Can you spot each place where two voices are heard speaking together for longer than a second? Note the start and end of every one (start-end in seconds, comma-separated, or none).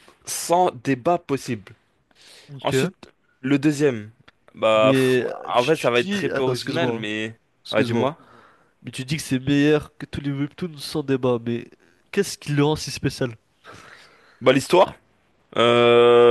4.7-7.1